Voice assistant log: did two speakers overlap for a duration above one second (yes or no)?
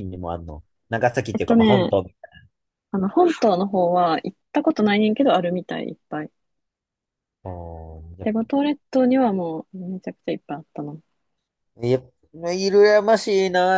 no